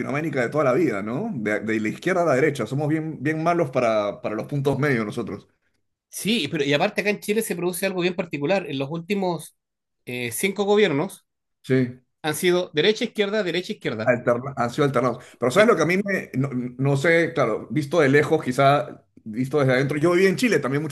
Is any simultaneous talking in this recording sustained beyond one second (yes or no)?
no